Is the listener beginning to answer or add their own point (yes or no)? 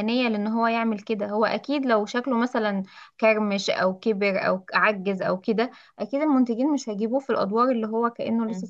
yes